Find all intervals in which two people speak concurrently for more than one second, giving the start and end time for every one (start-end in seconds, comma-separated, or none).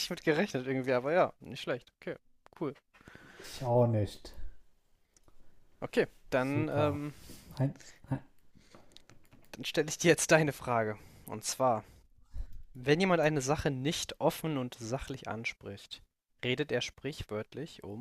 none